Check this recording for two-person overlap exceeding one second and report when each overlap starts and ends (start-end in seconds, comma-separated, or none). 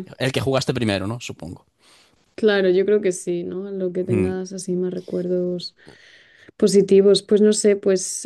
none